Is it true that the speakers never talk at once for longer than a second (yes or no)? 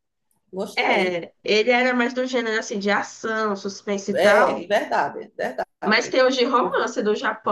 yes